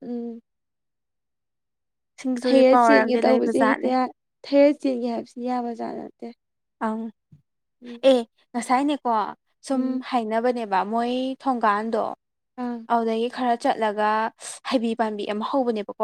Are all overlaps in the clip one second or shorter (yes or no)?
no